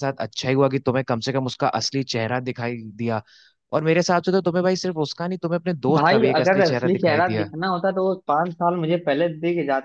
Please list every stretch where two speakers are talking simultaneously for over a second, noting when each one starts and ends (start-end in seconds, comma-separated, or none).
5.9-7.5